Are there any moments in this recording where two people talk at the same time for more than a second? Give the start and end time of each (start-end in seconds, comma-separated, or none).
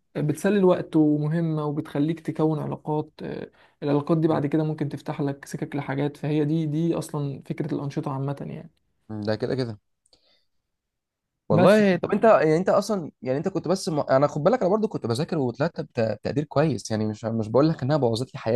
none